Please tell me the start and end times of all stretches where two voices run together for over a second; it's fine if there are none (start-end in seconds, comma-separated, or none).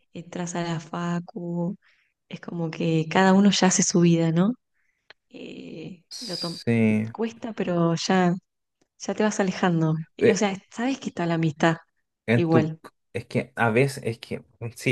none